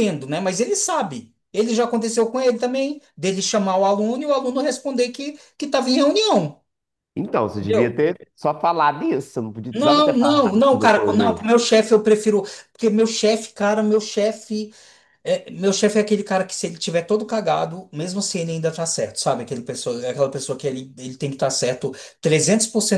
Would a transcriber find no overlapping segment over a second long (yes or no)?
no